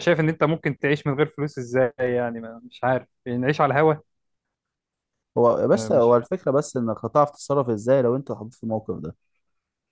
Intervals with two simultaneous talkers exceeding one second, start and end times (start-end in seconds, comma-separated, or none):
none